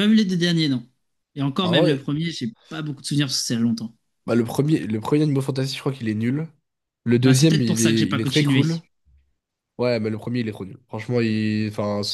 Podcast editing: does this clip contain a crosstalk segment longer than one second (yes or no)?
yes